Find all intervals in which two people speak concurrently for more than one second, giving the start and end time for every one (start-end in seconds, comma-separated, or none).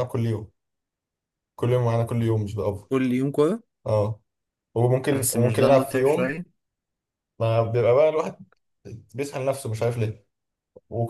5.1-6.4